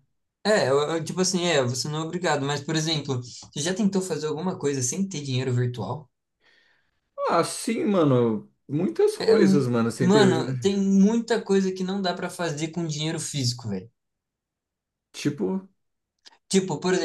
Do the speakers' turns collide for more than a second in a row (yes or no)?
no